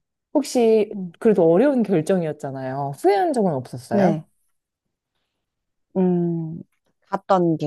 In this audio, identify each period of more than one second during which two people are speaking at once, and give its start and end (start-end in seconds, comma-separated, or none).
none